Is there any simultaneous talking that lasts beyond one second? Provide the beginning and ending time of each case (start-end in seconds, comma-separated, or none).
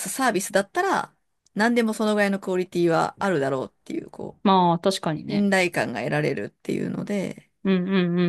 none